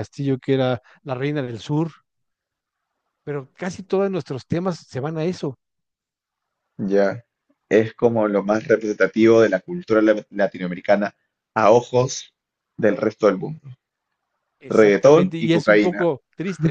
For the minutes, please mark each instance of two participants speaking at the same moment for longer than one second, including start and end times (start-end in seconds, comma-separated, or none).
14.7-16.1